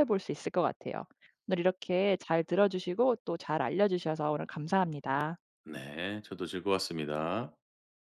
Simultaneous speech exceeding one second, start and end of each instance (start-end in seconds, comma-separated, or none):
none